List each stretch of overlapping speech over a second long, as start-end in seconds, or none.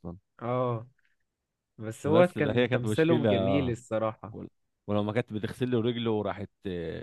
2.0-3.3